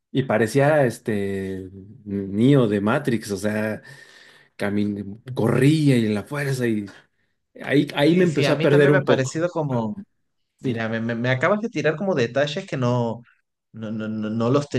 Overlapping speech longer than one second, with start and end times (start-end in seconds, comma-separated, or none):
8.1-9.9